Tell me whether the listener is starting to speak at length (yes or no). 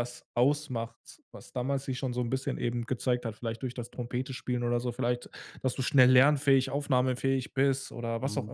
yes